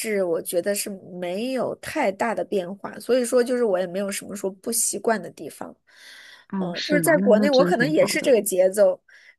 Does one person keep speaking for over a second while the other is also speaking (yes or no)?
yes